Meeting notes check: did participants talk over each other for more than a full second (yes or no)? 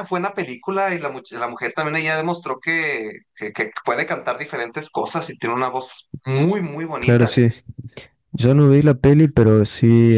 no